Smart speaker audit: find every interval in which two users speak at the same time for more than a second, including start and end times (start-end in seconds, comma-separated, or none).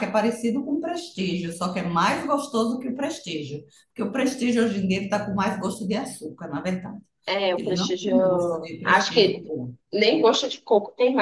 7.6-9.5